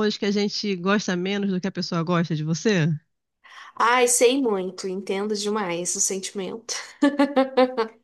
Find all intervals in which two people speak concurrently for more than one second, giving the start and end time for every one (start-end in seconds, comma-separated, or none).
none